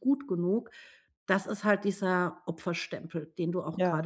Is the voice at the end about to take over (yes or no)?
yes